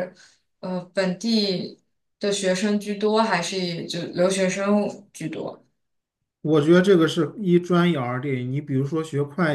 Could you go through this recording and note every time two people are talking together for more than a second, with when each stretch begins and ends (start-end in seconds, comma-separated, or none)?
none